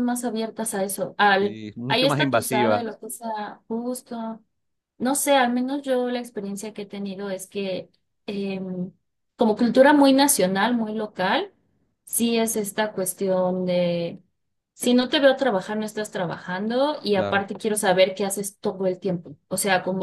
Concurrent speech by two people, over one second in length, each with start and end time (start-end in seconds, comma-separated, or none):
1.4-2.9